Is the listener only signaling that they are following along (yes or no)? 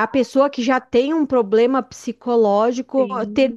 no